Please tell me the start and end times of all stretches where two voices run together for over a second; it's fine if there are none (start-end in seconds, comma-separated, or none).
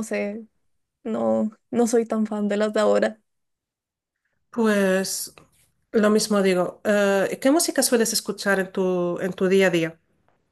none